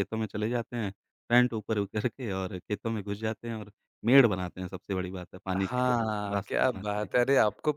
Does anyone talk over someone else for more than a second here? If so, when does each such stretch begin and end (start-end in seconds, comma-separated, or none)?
5.6-7.1